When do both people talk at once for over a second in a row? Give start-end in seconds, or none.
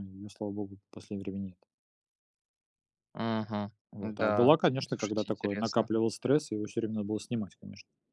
3.9-5.9